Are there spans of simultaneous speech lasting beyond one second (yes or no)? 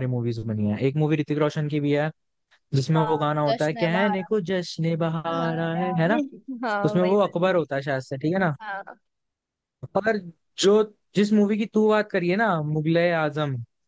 yes